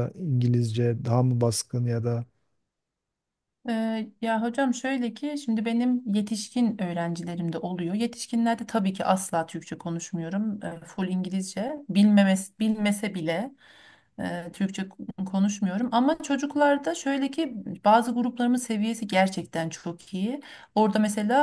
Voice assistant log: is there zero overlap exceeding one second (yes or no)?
yes